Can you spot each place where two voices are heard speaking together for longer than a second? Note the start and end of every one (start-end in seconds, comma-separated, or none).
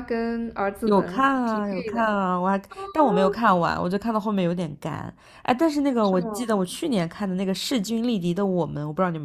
0.8-2.2